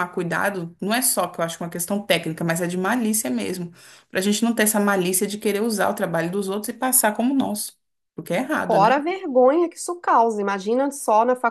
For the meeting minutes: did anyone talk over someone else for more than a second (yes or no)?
no